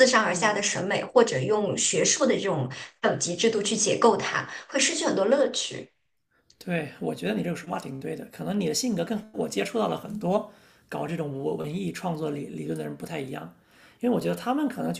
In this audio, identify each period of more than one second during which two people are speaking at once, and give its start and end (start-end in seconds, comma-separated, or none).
none